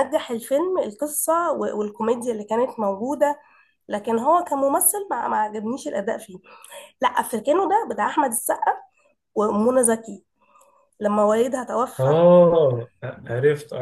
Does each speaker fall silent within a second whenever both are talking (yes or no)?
yes